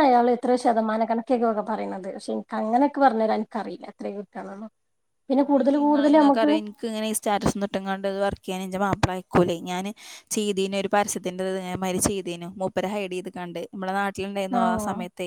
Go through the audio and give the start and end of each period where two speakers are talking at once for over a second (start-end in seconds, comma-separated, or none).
none